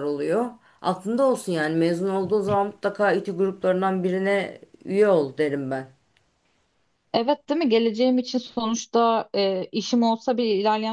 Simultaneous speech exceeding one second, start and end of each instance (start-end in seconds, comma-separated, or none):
none